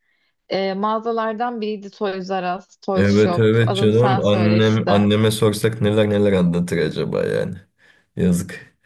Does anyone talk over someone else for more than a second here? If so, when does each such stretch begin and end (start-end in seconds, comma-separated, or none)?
2.9-5.1